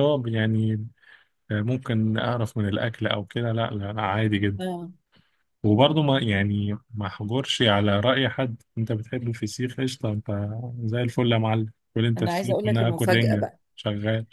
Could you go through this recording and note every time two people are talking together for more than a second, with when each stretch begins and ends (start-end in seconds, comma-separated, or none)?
12.2-13.6